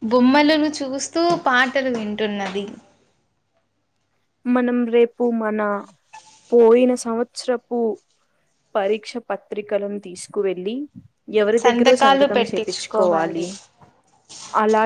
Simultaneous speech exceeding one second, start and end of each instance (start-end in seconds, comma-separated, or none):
11.6-13.5